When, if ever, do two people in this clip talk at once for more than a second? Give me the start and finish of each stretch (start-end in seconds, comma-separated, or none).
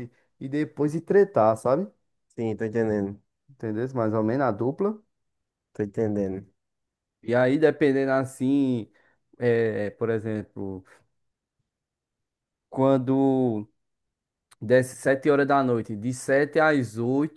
none